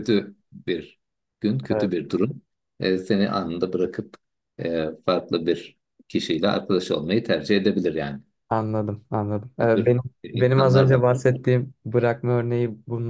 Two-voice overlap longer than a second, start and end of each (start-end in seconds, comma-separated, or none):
9.6-11.2